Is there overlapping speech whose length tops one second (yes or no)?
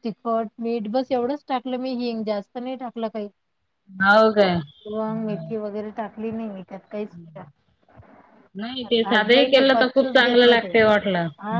yes